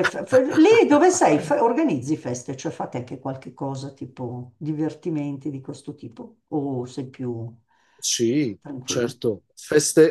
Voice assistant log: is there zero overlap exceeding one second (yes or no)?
yes